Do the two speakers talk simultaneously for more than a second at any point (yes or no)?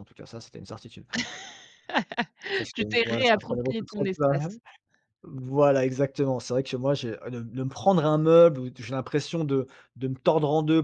yes